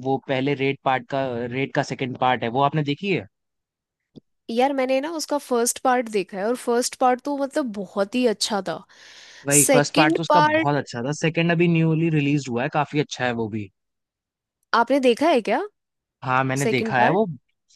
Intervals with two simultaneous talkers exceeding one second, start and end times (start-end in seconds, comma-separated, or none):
9.6-10.8